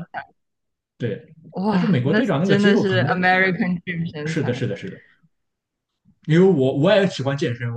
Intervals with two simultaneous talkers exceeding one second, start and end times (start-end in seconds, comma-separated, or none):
1.5-3.0